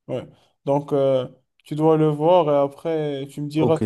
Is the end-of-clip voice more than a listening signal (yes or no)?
yes